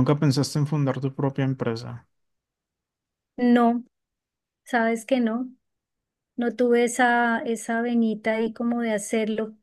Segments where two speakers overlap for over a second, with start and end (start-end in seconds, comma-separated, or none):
none